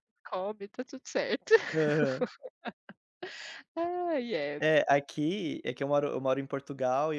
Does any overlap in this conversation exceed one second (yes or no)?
no